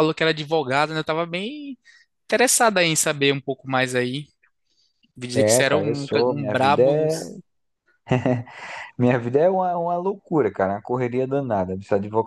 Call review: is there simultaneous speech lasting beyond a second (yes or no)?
yes